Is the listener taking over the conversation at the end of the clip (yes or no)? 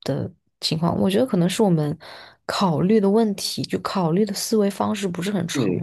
yes